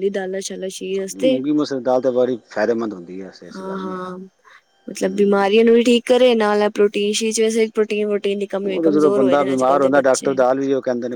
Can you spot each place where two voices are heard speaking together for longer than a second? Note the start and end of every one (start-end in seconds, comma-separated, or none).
8.7-10.3